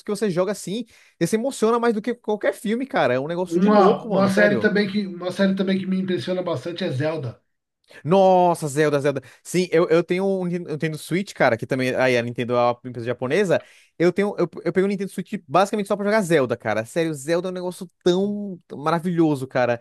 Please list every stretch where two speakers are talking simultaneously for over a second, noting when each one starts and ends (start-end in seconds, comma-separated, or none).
3.5-4.7